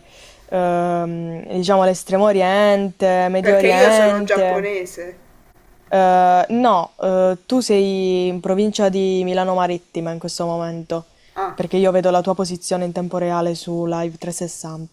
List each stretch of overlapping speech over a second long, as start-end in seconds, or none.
3.4-4.7